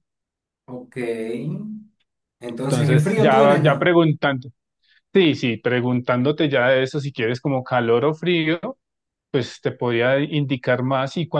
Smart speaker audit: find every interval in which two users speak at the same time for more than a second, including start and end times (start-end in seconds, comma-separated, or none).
2.7-3.9